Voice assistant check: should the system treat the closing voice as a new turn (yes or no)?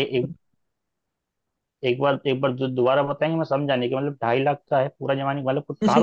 yes